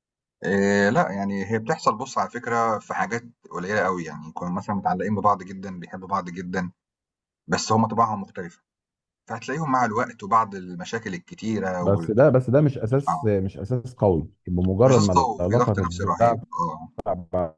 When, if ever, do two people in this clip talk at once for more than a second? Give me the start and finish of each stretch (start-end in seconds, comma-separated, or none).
14.8-16.4